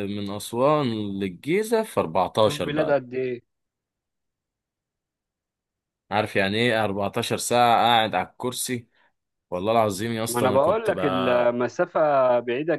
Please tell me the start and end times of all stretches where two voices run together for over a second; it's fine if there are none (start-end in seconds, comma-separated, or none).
10.3-11.5